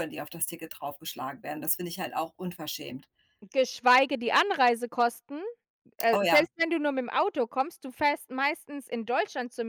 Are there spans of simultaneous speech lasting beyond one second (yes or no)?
no